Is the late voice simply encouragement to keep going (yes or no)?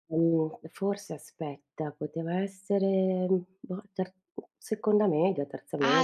no